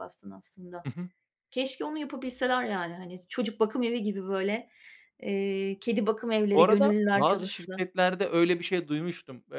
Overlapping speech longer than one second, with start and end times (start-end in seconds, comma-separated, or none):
6.5-7.8